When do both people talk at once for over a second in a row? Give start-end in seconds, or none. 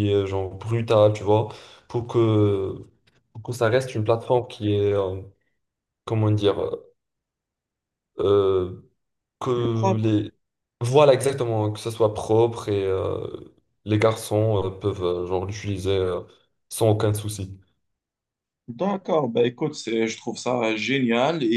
none